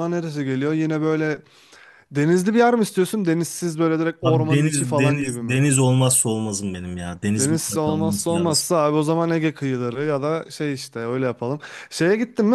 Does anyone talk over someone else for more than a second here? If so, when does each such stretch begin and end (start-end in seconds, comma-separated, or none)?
4.2-5.6, 7.4-8.7